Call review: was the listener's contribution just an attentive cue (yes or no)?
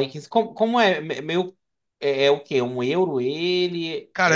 no